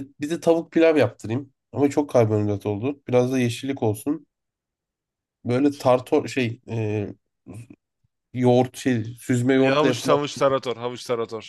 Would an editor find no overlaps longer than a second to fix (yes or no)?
yes